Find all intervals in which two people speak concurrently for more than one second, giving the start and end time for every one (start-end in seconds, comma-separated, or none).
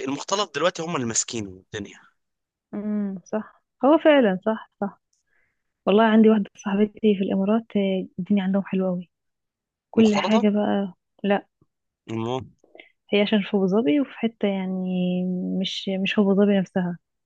none